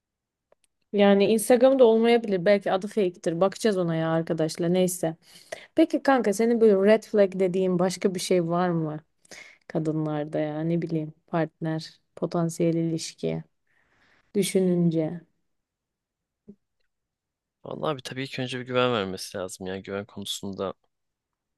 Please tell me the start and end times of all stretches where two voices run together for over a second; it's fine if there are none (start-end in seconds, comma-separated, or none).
none